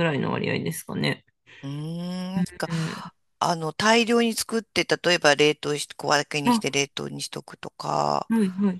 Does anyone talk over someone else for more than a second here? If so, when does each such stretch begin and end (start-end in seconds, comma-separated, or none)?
none